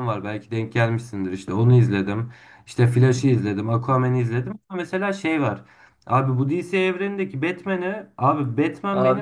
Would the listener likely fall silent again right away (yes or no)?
yes